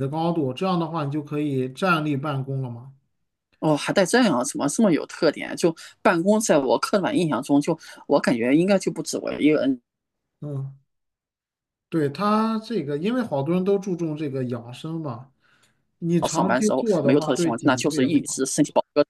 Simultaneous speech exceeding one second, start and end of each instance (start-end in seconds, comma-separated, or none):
16.3-18.4